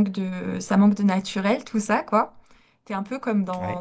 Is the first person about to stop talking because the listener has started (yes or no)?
no